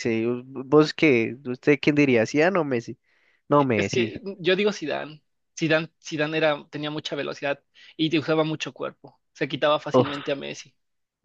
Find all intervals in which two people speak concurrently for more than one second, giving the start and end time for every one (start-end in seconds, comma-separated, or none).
none